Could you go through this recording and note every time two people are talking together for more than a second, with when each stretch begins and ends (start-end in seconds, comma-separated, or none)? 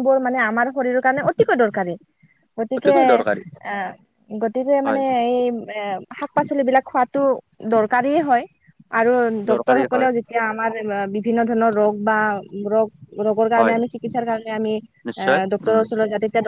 none